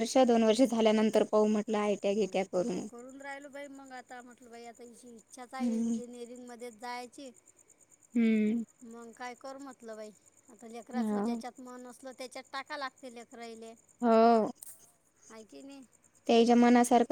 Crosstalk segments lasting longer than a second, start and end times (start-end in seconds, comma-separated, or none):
none